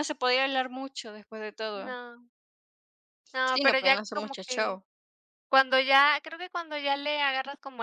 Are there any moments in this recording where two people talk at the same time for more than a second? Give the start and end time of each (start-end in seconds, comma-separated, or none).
3.5-4.8